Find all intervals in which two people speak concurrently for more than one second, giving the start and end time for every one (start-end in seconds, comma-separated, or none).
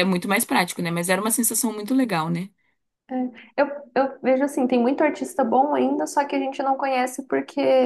none